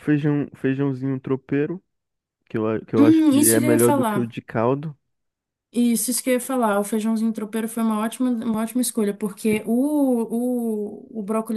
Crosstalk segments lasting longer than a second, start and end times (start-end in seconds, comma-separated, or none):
3.0-4.3